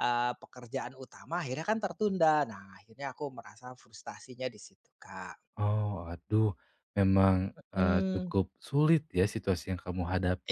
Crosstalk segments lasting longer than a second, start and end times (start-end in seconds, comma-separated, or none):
none